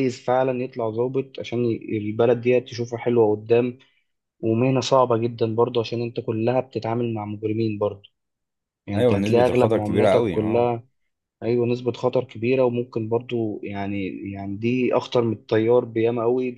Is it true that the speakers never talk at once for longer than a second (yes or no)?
no